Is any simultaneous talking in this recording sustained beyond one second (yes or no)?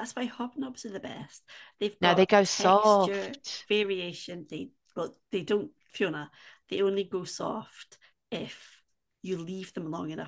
yes